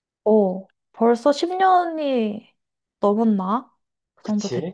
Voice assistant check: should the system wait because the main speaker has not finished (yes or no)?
no